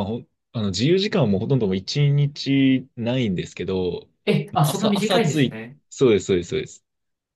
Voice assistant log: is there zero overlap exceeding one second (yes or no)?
no